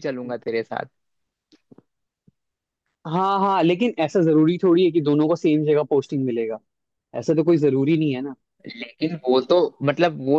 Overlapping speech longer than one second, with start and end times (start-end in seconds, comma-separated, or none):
none